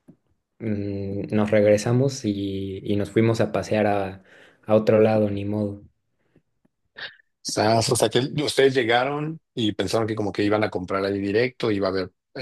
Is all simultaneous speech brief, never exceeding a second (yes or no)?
yes